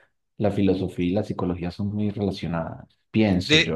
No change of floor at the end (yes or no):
no